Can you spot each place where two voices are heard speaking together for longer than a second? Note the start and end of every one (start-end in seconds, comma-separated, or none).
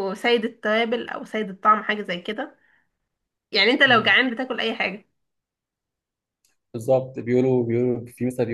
none